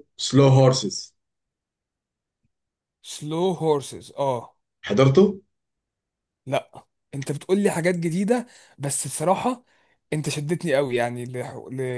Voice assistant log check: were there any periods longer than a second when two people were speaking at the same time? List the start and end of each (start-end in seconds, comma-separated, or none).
none